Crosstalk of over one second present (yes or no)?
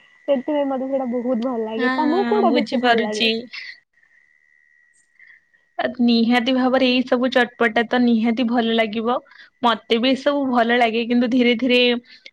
yes